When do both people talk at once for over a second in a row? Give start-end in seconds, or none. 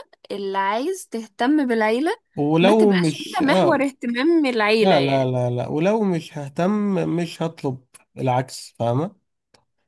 2.6-3.9